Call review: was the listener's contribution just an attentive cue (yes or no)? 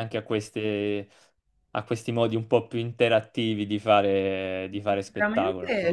no